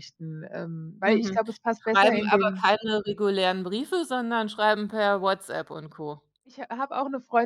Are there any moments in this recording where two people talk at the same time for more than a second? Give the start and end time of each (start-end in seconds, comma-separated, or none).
1.1-2.7